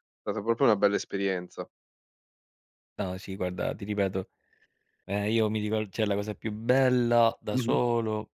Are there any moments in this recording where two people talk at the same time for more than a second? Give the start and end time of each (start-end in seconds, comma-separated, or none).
none